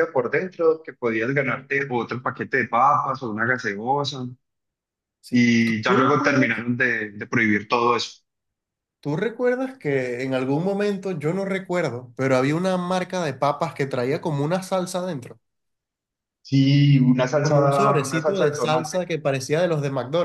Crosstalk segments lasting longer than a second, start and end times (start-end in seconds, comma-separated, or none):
5.3-6.6, 17.4-19.0